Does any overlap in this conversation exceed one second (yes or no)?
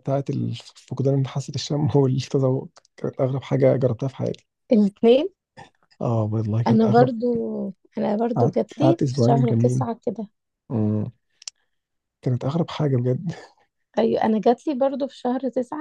yes